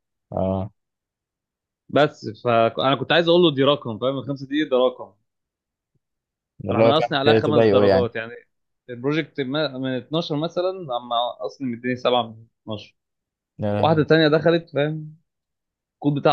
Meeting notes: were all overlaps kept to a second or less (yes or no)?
no